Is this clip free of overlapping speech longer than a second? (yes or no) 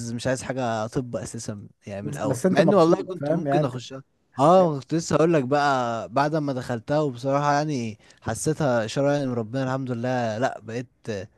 no